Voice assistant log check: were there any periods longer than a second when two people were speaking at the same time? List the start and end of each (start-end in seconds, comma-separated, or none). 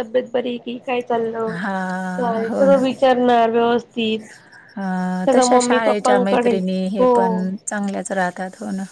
none